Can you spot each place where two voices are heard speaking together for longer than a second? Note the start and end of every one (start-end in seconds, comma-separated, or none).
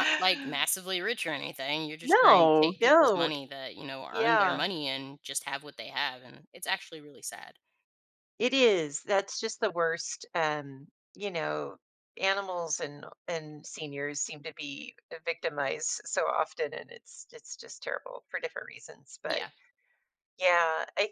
2.0-3.3